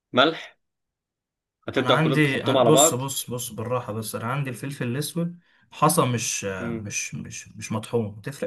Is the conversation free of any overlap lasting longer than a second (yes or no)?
no